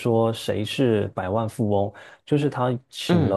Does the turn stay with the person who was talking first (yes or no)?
yes